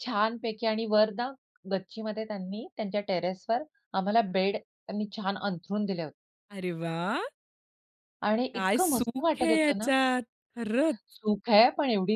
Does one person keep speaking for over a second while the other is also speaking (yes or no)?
yes